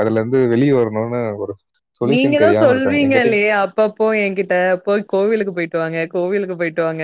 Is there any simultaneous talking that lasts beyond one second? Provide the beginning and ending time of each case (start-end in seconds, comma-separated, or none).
2.1-3.4